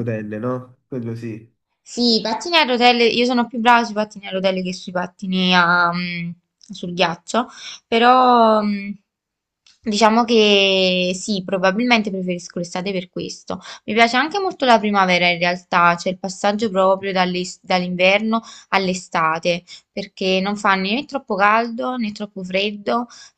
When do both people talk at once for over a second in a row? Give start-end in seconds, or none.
none